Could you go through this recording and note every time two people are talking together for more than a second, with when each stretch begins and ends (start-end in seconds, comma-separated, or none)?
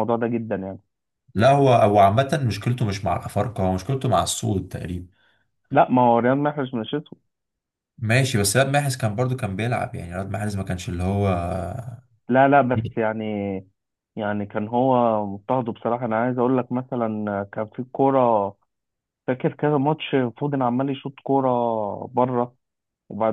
none